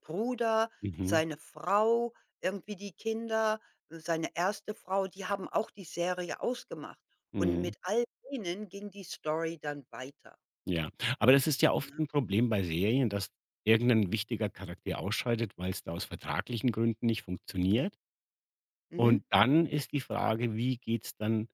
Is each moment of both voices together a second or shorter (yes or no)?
yes